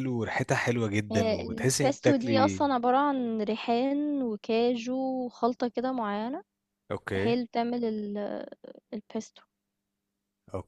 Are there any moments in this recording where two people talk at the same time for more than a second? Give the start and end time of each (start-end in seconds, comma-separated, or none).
1.1-2.6